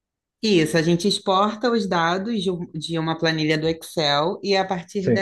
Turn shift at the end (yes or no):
no